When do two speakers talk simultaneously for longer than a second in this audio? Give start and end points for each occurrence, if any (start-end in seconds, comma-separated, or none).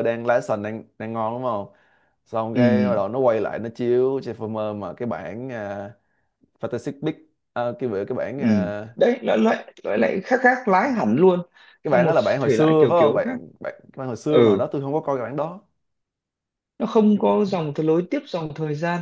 11.8-13.4